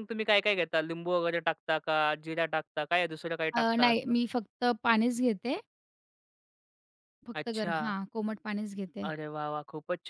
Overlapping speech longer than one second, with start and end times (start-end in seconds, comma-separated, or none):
none